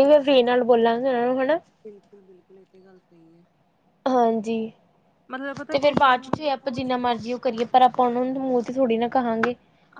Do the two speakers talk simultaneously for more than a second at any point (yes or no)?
yes